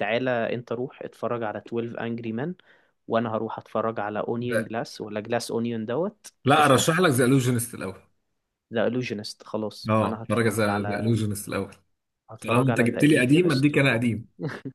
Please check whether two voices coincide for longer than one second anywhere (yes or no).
yes